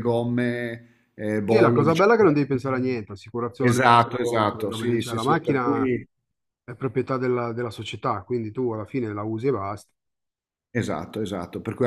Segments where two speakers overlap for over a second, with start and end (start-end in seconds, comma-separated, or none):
1.4-3.0, 3.6-5.8